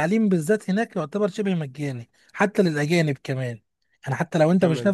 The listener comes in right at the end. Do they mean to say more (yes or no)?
no